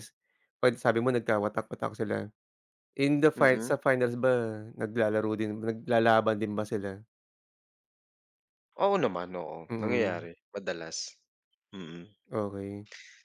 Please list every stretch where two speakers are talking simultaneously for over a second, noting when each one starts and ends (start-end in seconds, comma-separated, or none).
none